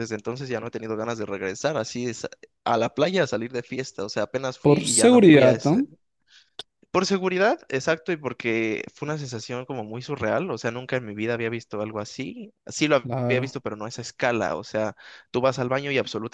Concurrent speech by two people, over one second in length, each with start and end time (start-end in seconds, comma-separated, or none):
4.6-5.8